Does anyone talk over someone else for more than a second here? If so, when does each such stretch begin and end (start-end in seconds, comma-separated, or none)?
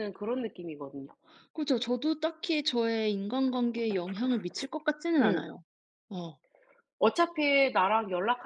none